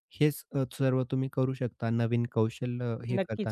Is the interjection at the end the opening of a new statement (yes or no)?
yes